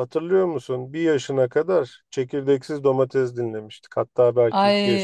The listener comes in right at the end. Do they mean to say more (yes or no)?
yes